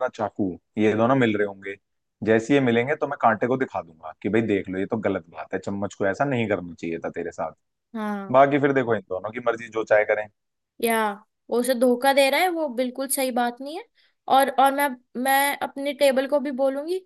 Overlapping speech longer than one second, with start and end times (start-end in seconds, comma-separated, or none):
none